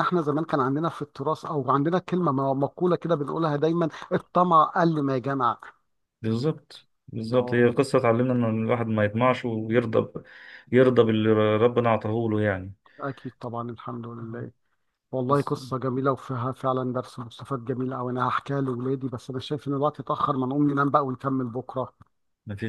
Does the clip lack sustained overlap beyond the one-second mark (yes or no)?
yes